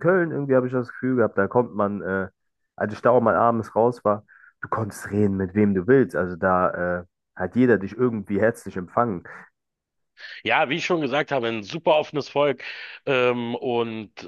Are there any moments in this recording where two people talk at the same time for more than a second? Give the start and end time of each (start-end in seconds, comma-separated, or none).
none